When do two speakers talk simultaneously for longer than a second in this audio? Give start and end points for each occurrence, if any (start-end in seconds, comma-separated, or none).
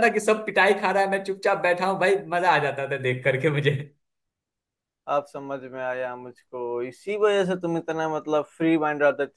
none